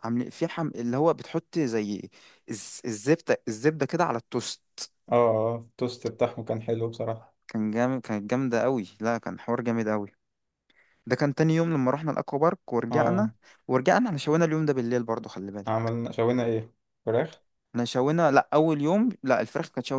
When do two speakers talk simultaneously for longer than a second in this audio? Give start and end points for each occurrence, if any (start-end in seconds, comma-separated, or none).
none